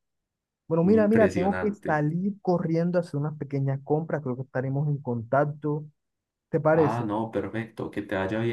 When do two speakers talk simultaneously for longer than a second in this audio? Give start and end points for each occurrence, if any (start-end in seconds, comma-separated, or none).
0.8-2.0